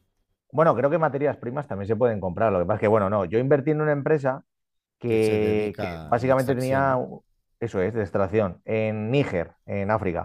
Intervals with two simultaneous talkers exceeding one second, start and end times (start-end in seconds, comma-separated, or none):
5.0-7.0